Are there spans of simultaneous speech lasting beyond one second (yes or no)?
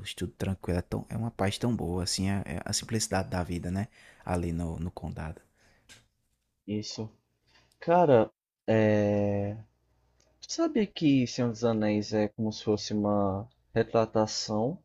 no